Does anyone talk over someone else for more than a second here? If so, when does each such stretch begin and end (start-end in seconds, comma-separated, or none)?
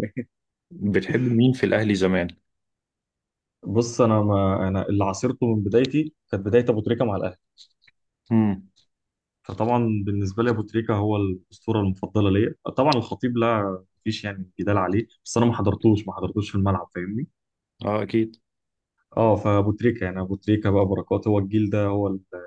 none